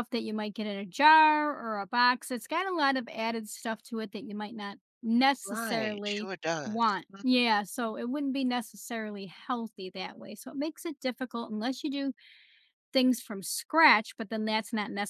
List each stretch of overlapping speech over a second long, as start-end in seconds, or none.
5.4-7.4